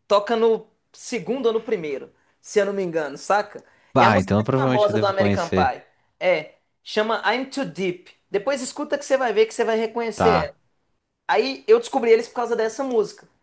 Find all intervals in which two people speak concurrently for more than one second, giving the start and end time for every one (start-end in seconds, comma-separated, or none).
4.0-5.8